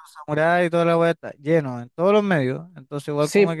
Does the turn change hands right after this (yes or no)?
no